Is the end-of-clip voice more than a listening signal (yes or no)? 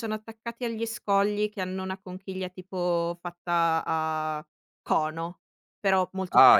yes